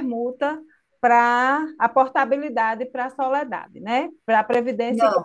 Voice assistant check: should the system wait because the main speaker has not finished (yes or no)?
no